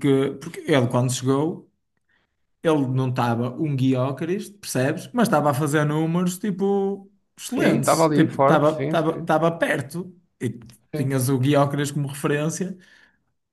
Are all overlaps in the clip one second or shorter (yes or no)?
no